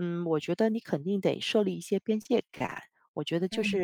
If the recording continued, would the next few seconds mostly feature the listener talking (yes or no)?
no